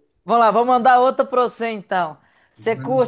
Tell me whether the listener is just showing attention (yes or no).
yes